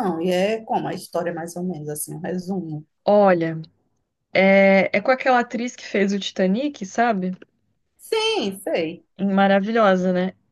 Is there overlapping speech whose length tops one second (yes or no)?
no